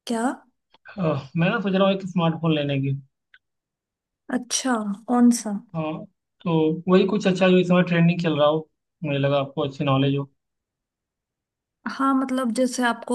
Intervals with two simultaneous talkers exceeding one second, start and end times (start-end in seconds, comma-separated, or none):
none